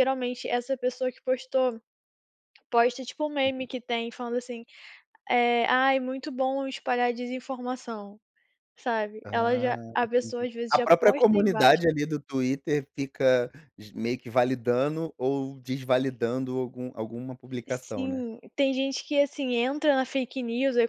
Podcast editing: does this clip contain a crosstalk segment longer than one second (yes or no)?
yes